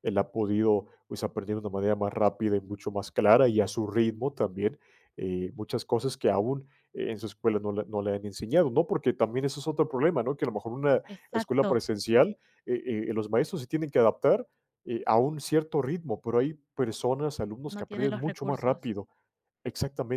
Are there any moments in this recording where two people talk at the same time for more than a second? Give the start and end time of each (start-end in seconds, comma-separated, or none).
17.7-18.9